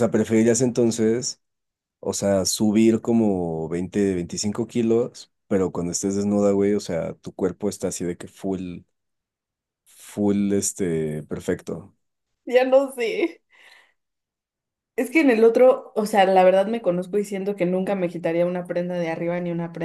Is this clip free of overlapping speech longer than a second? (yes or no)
yes